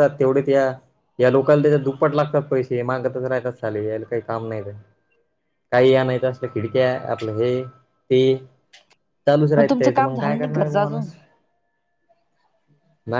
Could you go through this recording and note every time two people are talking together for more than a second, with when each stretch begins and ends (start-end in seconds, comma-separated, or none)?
9.6-11.1